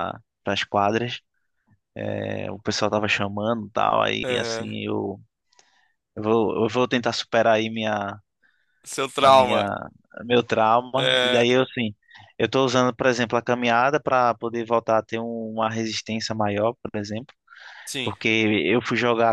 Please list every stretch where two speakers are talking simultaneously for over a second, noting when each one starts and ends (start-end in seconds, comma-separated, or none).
none